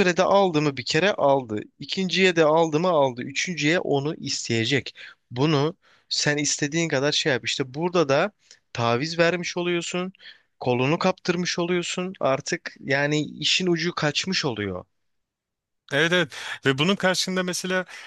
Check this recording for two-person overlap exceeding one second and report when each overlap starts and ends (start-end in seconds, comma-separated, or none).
none